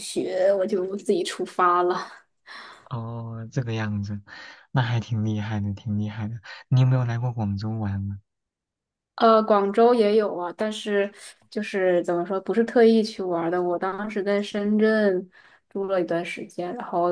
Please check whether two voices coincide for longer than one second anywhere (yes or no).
no